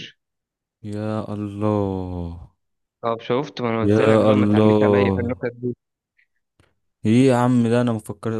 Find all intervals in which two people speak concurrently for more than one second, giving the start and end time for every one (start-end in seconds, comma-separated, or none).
3.8-5.3